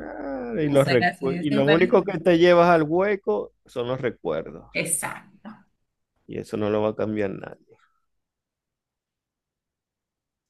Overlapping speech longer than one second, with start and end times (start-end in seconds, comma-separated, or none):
0.6-2.1